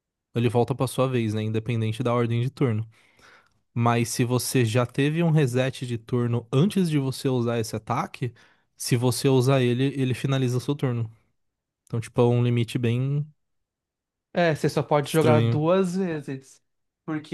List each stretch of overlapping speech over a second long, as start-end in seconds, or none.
none